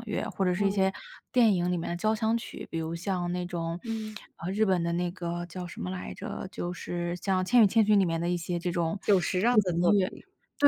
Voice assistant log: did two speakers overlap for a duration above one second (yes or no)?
no